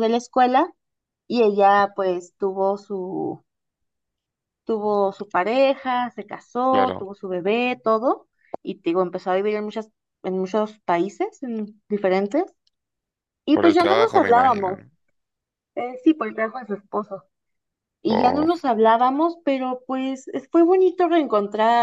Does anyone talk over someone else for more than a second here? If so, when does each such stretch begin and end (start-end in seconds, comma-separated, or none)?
13.5-14.8